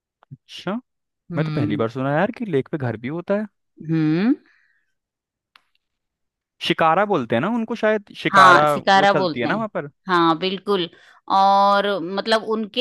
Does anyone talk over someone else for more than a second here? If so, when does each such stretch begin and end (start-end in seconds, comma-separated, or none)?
8.3-9.7